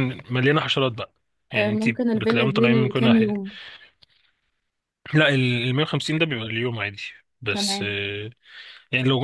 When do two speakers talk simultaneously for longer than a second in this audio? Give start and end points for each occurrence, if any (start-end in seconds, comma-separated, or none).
1.5-3.3